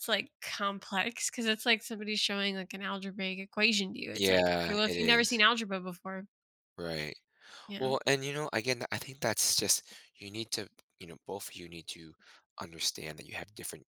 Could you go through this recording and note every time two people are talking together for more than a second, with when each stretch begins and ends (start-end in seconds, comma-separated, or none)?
4.1-5.5